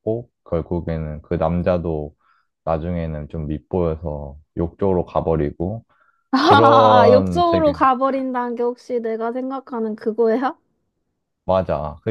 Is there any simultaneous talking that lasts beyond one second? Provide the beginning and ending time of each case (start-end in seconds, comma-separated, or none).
6.4-7.7